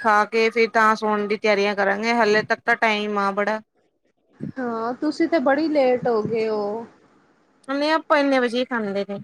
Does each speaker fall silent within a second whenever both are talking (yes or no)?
yes